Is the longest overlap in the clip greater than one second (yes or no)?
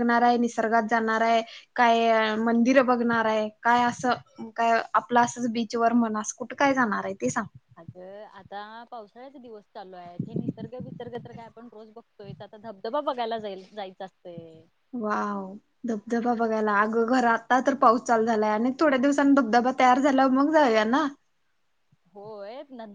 no